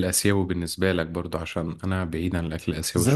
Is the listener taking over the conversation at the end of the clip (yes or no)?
yes